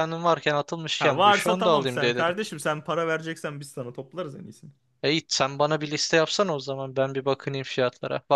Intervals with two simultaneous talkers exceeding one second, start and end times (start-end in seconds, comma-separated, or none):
1.0-2.3